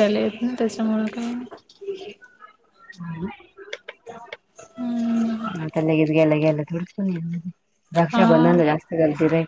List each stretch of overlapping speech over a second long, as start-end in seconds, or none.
none